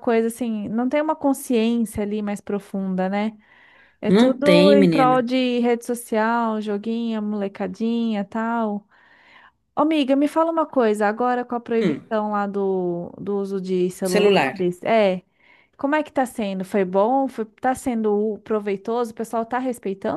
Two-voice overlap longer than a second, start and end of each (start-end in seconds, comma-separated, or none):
4.1-5.3